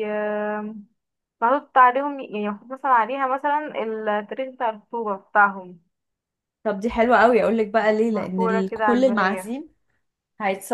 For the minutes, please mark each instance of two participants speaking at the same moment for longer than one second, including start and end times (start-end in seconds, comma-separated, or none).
8.1-9.5